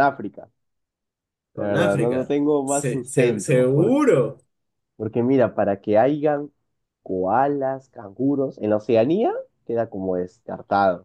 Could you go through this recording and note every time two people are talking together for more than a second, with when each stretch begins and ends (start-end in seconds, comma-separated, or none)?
1.6-4.0